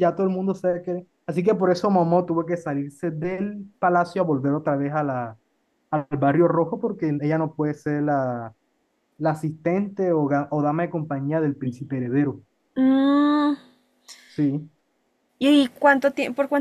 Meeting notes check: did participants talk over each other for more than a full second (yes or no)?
no